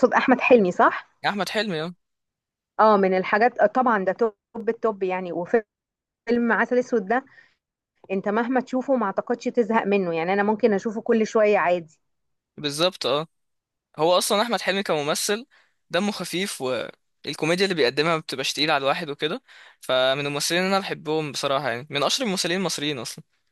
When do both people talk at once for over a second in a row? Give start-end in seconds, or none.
none